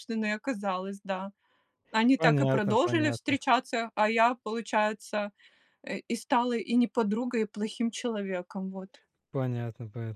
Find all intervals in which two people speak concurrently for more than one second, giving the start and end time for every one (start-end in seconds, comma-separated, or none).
2.2-3.4